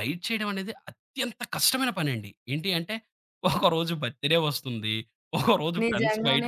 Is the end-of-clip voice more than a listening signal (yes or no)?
yes